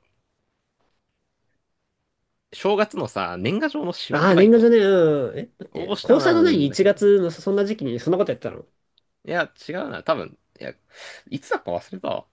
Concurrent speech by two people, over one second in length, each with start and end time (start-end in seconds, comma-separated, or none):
5.7-7.1